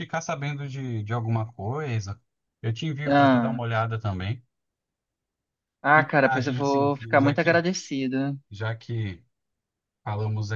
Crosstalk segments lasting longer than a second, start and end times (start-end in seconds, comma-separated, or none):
5.9-7.6